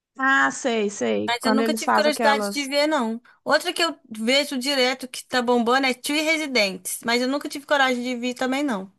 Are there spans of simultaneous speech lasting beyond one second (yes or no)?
yes